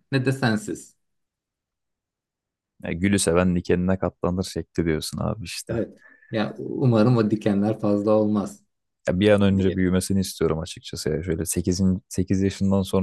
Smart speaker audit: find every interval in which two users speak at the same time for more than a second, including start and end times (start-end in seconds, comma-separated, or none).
none